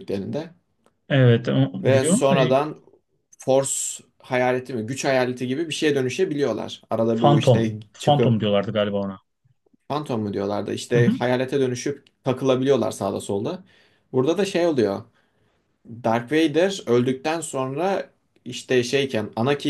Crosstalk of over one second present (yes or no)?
yes